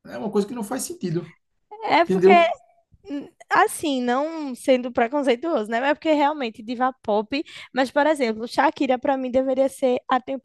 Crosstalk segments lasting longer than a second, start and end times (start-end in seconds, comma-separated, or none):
none